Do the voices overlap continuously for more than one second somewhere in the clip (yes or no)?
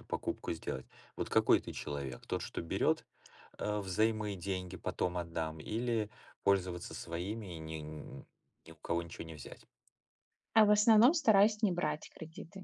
no